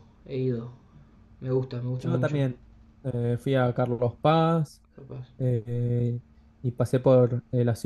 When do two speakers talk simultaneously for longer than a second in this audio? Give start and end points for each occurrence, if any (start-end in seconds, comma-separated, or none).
none